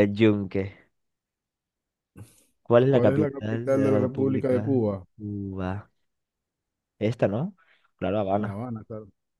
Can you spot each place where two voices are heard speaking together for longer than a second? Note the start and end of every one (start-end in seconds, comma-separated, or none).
2.9-5.0